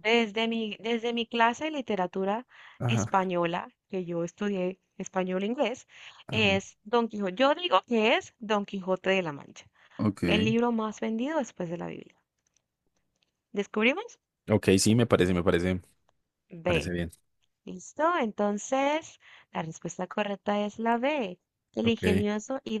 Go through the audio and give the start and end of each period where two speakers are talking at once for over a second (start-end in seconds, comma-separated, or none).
none